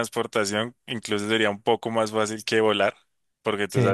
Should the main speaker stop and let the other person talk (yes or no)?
no